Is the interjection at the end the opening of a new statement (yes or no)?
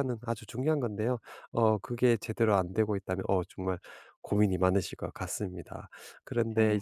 no